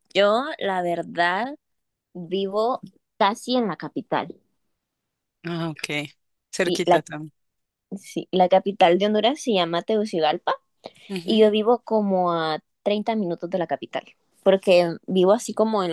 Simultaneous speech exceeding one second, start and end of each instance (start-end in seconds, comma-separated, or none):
none